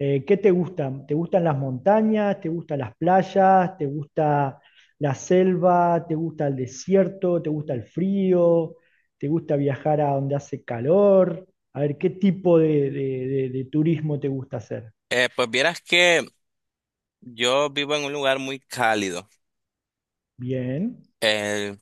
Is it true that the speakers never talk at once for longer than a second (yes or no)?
yes